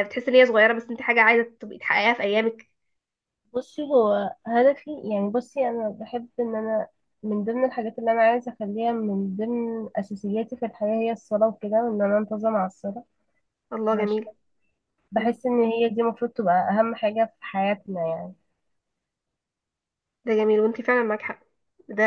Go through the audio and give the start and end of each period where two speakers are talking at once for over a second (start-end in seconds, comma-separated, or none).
none